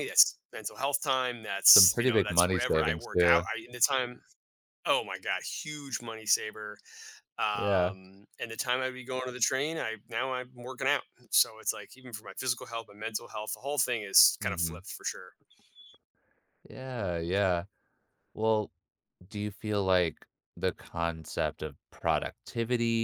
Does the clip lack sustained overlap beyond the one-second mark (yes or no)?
no